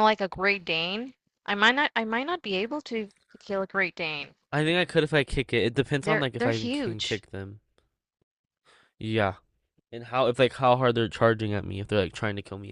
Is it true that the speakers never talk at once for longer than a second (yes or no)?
no